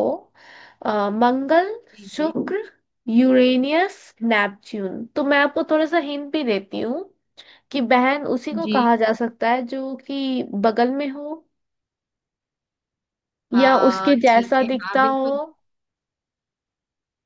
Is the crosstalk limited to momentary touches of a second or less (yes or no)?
no